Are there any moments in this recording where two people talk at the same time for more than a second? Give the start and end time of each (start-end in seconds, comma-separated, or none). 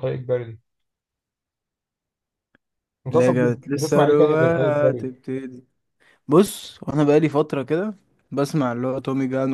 3.1-5.1